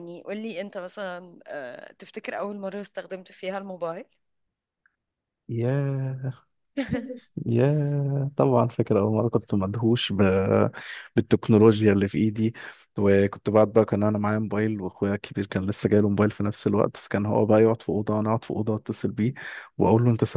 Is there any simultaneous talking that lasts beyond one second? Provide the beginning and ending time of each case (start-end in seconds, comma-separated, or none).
none